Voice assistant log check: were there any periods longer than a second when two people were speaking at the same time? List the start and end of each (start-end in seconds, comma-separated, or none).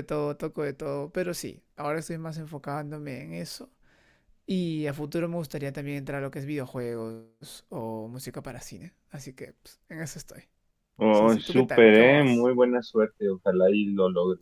11.1-12.5